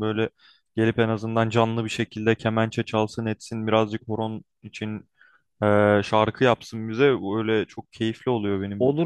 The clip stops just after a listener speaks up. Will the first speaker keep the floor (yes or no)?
no